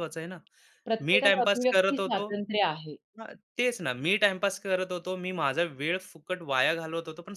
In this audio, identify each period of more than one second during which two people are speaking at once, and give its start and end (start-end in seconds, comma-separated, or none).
1.0-2.3